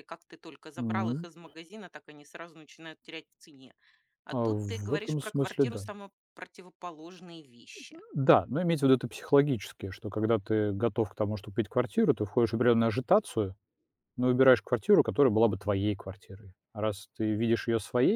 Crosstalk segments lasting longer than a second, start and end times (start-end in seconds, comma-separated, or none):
4.3-5.8